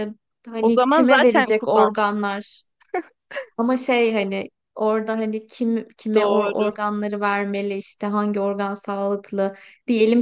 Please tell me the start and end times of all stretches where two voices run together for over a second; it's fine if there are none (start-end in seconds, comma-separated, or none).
0.6-2.2